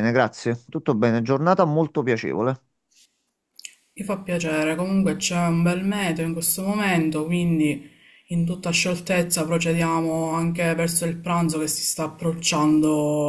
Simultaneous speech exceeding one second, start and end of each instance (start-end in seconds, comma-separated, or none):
none